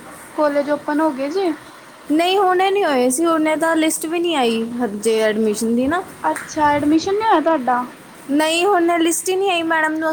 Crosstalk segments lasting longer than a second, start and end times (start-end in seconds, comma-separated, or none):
none